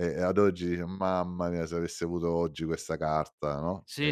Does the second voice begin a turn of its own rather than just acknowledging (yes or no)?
yes